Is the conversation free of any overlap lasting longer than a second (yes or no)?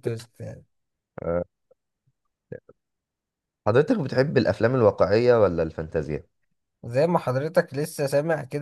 yes